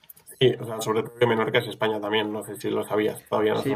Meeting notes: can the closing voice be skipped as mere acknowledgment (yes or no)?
no